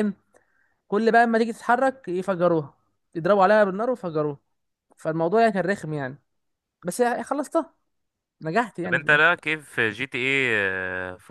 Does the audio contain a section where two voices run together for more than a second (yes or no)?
no